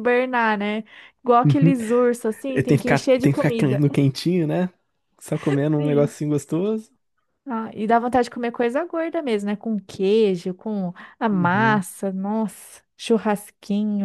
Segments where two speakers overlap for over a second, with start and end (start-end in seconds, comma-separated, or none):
2.5-3.8